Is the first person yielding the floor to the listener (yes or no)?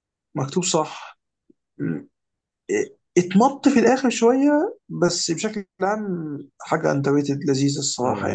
yes